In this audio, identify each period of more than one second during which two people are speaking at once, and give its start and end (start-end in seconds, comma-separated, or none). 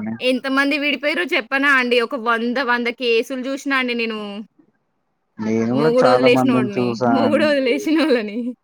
5.8-7.7